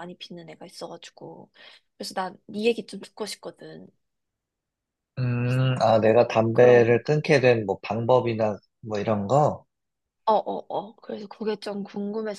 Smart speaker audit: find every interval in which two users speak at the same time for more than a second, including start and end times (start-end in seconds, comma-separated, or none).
none